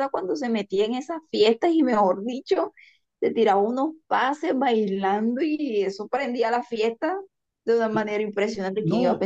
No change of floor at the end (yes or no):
no